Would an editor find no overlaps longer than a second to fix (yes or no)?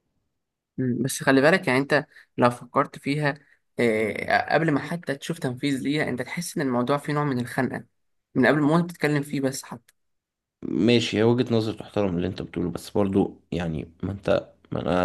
yes